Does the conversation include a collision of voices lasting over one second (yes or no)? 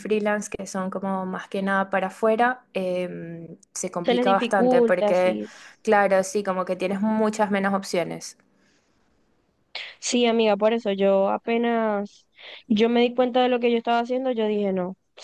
yes